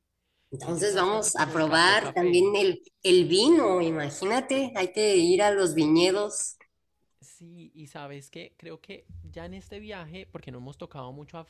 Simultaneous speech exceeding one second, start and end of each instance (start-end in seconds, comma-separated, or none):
0.6-2.5